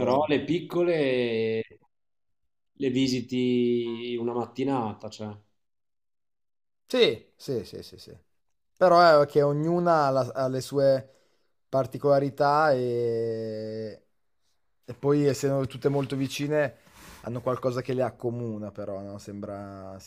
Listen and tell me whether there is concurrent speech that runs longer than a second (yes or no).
no